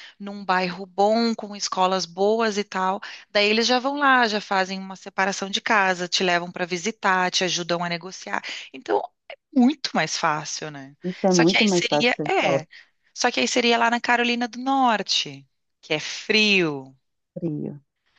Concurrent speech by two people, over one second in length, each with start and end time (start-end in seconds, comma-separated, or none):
11.3-12.6